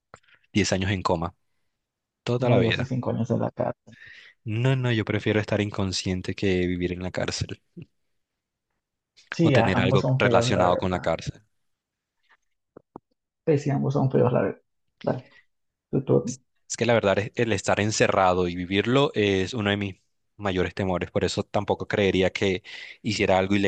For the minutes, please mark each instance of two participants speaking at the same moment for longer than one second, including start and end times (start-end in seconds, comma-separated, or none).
9.4-11.0